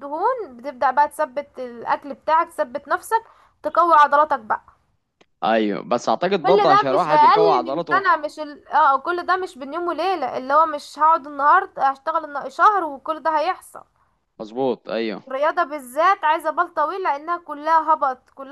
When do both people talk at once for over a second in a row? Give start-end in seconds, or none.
6.5-8.0